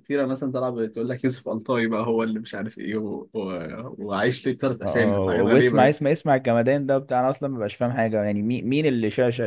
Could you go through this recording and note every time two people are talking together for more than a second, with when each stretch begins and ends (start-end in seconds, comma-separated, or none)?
4.8-6.1